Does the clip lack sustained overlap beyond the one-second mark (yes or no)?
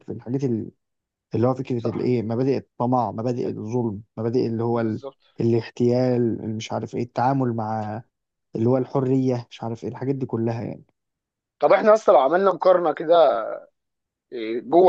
yes